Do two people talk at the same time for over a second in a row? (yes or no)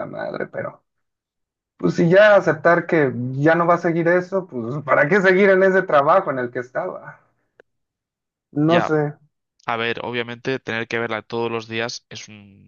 no